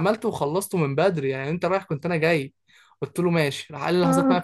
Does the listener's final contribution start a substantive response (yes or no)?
no